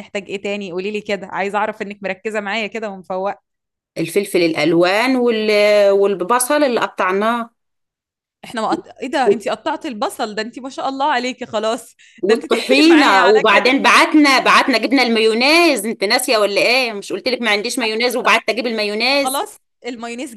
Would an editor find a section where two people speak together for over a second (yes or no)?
yes